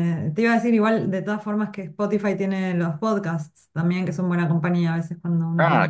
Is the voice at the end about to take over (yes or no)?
yes